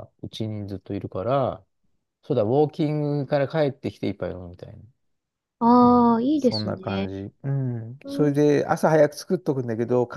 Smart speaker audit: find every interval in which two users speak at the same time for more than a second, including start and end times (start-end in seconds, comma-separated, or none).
5.8-7.1